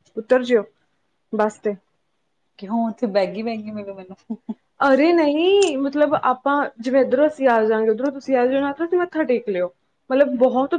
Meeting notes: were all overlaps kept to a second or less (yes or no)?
yes